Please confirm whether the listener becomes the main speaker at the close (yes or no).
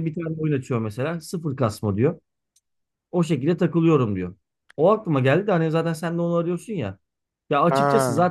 no